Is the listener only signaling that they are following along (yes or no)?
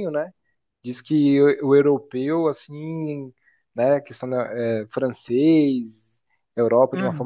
yes